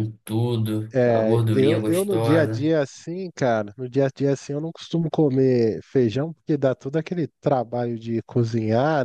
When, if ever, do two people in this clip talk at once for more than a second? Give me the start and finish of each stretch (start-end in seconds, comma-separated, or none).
0.9-2.7